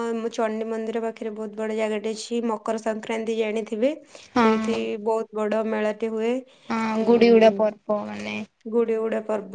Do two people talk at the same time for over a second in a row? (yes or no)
no